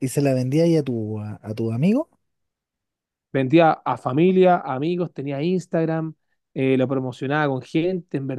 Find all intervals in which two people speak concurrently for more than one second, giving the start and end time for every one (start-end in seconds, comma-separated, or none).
none